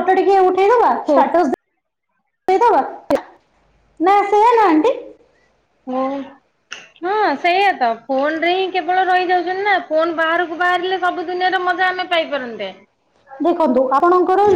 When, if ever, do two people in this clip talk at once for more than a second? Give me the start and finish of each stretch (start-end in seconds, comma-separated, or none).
none